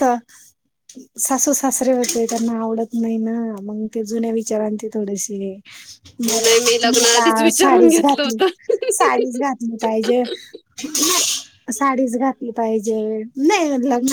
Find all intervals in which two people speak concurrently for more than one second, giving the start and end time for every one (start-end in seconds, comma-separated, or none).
6.4-8.4